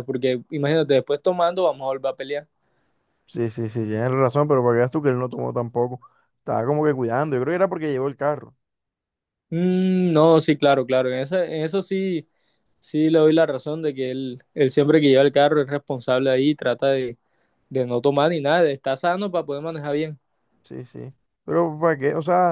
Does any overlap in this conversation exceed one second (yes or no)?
no